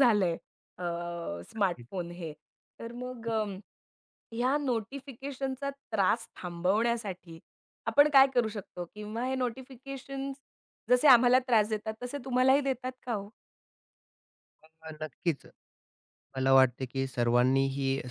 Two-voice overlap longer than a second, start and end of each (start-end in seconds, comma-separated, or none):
none